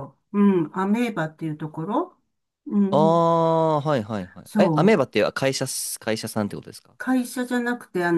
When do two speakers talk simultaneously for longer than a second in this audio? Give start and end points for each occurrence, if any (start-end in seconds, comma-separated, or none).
none